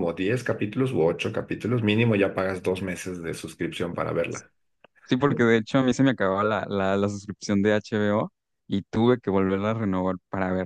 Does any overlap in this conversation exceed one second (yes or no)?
no